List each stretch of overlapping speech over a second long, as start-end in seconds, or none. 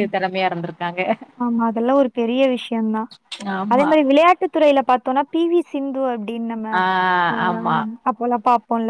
none